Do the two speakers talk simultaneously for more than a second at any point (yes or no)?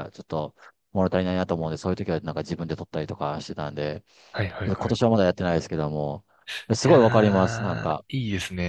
yes